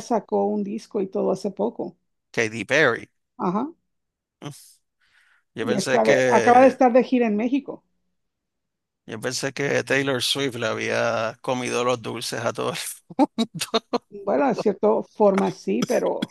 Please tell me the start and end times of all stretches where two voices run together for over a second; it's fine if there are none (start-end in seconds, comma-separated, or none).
5.6-6.8